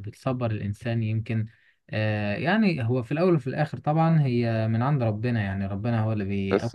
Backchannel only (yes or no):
no